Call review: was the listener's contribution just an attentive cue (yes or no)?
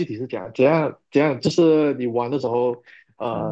yes